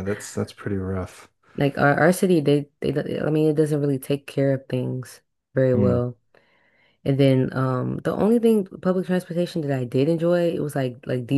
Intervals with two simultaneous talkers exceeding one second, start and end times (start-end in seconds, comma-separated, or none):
none